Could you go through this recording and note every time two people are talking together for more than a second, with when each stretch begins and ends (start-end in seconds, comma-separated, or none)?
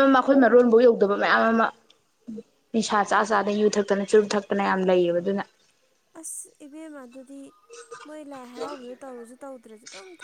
none